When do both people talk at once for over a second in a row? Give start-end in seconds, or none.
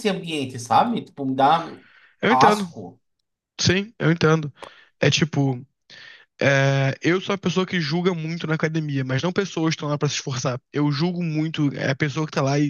none